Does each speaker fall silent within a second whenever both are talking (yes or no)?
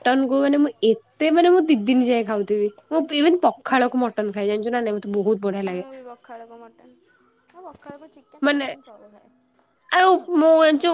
yes